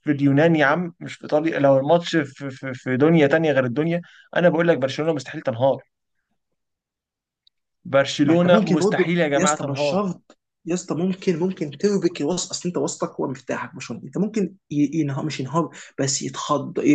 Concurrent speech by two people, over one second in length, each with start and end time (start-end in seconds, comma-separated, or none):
8.2-10.1